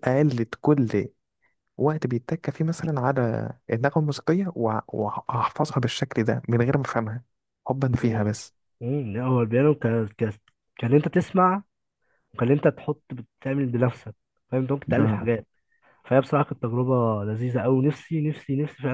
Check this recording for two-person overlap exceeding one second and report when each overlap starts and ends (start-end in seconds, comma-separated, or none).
none